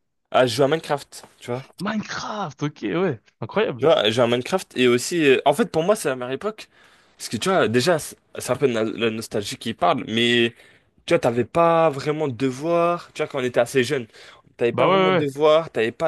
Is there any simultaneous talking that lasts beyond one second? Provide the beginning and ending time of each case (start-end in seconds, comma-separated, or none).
none